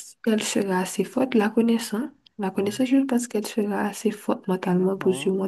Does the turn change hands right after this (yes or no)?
yes